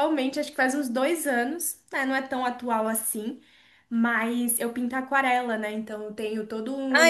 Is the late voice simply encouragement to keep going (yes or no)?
no